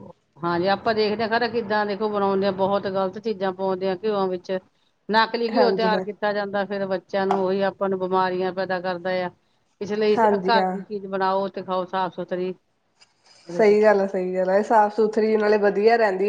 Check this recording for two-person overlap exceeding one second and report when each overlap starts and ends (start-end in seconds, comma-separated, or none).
none